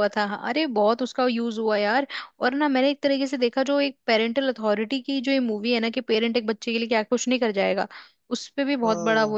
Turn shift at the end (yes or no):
no